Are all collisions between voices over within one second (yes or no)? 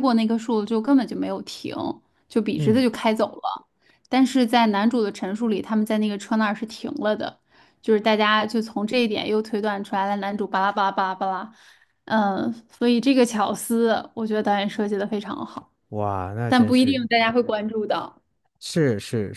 yes